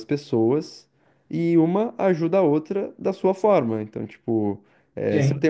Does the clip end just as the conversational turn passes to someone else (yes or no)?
no